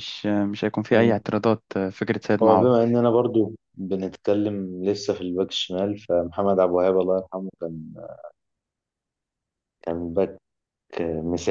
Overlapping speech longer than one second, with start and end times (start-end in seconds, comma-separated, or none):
none